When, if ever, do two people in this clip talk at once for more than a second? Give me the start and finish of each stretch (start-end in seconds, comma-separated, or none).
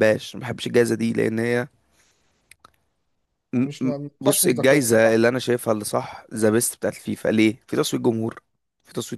3.5-5.2